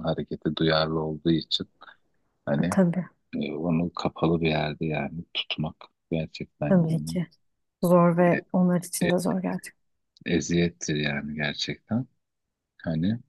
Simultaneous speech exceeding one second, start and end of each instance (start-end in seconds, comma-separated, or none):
none